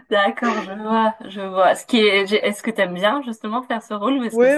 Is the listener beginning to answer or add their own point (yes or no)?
yes